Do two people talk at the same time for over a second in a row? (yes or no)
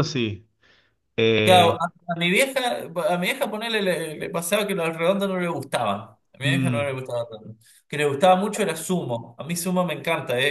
no